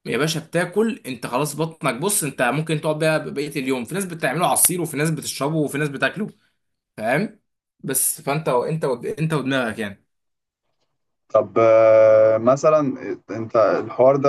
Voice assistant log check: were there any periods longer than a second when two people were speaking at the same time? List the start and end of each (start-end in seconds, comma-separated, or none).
none